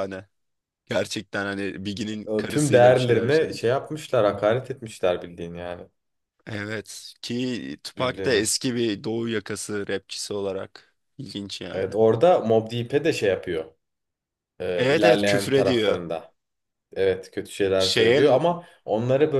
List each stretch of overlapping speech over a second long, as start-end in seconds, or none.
2.3-3.6, 14.8-16.0